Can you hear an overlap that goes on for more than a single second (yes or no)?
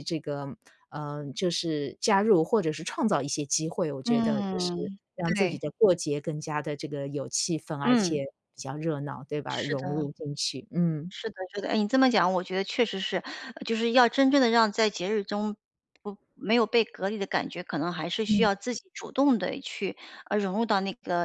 yes